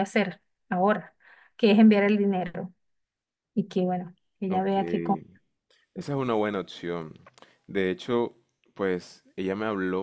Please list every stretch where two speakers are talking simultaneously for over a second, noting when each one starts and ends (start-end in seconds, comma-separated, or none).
none